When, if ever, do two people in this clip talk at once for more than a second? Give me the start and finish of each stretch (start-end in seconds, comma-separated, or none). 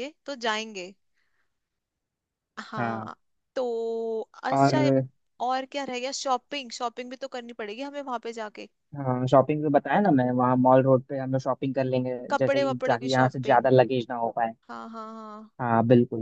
12.3-13.7